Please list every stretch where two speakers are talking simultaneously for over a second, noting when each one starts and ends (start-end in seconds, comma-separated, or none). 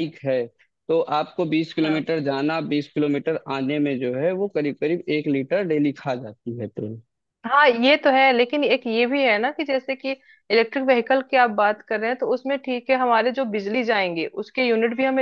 none